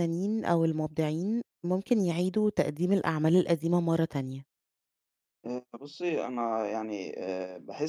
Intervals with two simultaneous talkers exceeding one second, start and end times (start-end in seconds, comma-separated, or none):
none